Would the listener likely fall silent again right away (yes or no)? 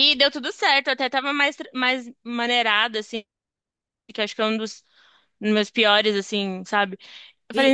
yes